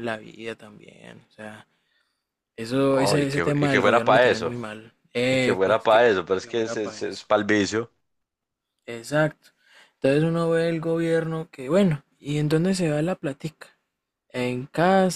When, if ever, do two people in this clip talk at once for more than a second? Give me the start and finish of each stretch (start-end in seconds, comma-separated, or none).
2.9-4.5, 5.3-7.3